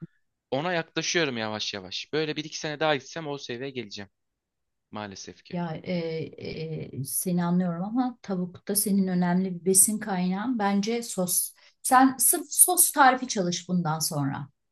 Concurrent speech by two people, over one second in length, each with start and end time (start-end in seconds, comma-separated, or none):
none